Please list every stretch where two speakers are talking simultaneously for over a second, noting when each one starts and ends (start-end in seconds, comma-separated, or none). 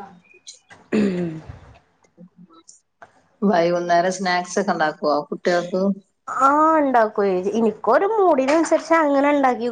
none